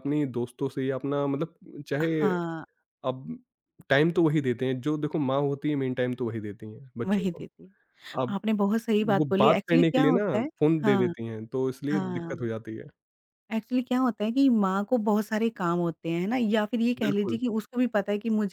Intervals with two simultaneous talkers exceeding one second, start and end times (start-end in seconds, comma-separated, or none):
9.2-11.1